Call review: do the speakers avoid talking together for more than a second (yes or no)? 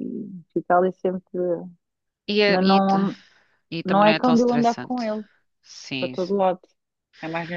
no